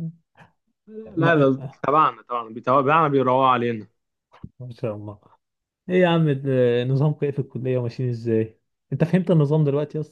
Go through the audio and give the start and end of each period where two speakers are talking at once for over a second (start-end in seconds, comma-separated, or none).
none